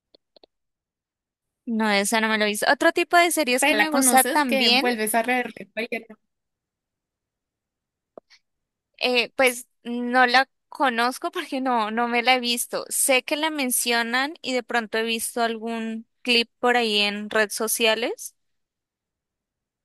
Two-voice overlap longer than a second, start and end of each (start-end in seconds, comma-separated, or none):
3.6-4.9